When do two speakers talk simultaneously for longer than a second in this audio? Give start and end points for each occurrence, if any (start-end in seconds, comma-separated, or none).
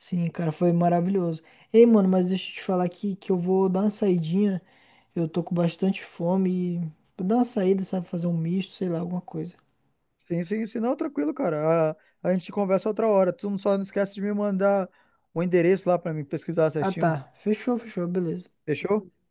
none